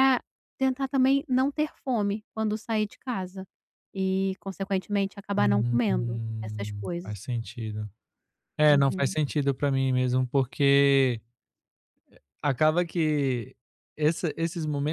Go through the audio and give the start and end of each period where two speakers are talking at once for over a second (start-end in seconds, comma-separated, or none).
5.3-7.1